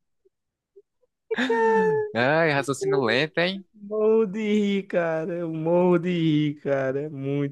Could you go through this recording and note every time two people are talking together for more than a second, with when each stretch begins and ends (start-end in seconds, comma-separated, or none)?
none